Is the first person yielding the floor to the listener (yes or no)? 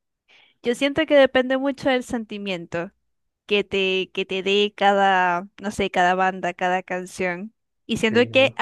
no